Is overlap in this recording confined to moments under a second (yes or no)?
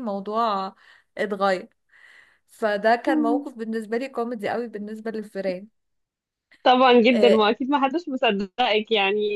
yes